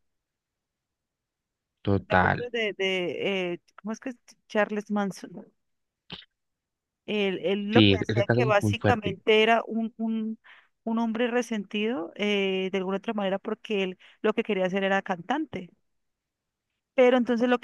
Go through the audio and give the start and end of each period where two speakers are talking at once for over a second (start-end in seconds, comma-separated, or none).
7.7-9.2